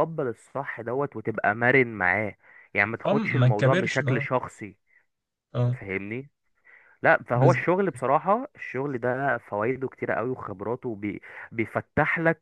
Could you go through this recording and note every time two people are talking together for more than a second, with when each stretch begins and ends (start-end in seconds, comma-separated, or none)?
3.0-4.3